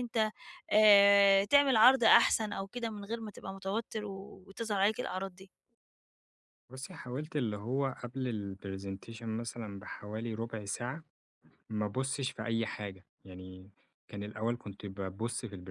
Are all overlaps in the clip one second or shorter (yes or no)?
yes